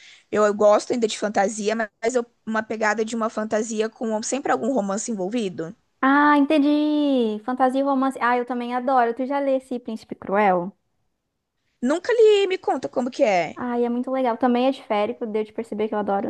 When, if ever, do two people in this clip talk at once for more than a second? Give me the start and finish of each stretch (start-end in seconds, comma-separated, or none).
none